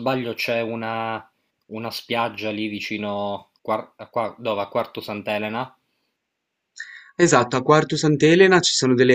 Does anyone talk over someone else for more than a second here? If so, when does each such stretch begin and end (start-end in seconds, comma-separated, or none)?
none